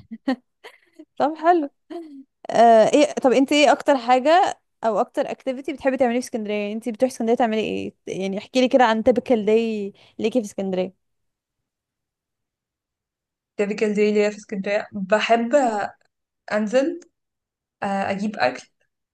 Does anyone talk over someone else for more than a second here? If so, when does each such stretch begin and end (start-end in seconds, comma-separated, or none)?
none